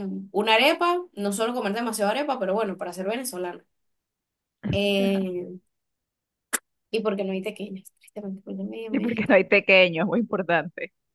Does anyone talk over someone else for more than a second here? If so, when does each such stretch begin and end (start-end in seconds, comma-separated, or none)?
none